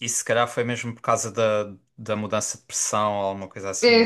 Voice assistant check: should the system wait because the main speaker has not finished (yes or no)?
no